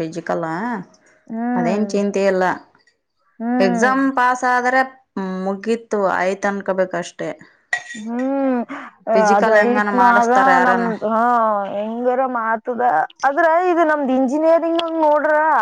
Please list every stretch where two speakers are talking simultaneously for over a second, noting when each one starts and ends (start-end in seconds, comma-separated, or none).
9.3-10.9